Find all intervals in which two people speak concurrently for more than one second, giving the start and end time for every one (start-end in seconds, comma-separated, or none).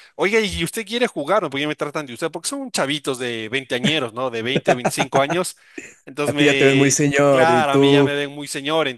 6.2-8.1